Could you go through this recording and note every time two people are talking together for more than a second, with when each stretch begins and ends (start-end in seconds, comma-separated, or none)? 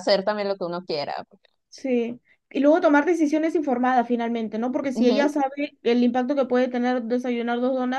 none